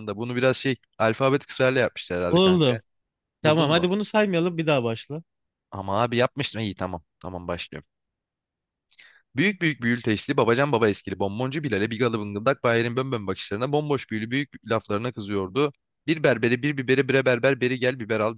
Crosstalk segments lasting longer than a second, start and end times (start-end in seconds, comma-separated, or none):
none